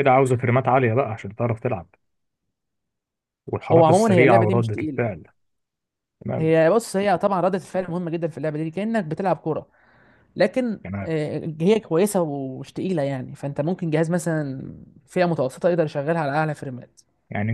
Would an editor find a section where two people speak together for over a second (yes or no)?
yes